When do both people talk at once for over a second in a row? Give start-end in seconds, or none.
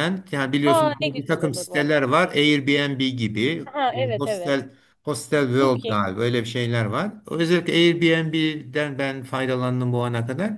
0.7-2.0